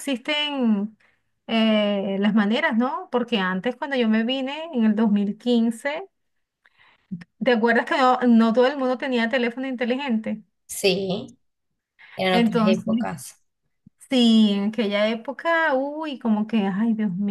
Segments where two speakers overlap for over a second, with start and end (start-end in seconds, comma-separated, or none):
none